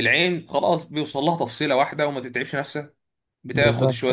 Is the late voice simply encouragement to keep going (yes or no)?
yes